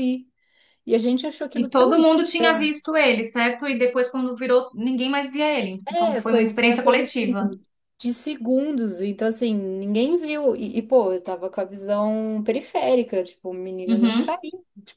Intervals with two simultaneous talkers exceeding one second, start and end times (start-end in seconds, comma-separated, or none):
5.8-7.5